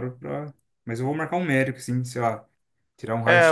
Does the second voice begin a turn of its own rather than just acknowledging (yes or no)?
yes